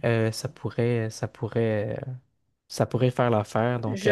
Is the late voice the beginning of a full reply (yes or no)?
yes